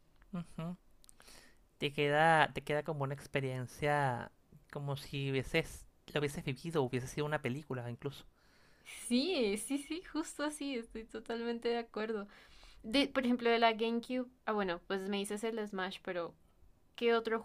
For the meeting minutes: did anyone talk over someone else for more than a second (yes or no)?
no